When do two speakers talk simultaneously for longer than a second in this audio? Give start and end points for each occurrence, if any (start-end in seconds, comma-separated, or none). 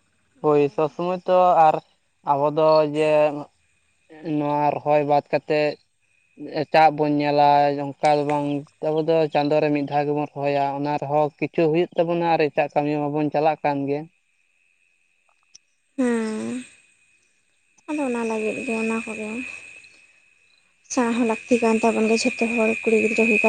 none